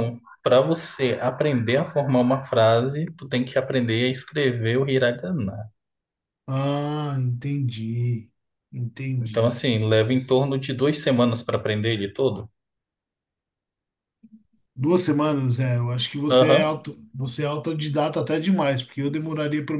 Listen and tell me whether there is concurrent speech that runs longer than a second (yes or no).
no